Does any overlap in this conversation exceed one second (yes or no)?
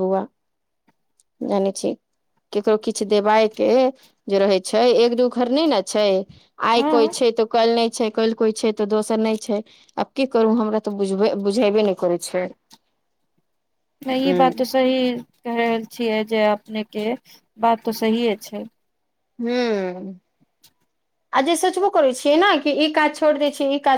no